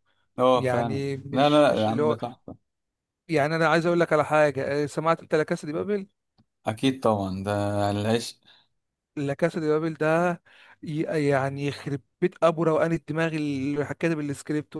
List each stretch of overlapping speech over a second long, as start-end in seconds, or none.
0.5-2.2